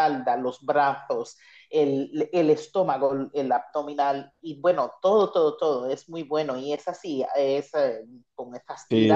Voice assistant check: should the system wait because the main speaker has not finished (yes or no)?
no